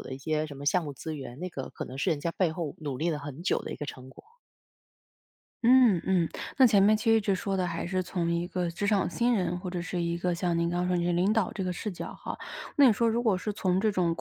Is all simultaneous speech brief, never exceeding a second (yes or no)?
yes